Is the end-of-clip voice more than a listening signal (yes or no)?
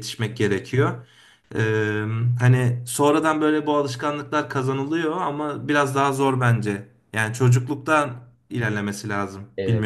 yes